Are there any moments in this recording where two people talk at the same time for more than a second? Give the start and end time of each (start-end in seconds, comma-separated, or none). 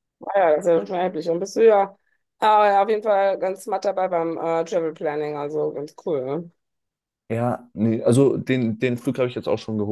none